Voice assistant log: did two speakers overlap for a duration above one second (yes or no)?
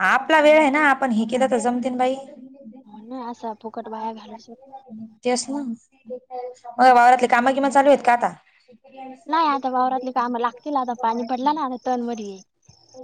no